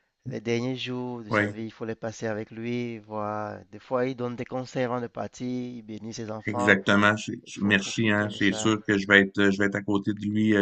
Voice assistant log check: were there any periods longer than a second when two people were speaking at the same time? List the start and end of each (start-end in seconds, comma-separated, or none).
7.5-8.7